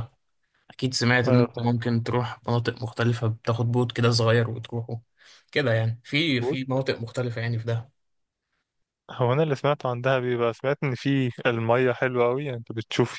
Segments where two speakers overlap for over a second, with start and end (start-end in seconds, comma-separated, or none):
none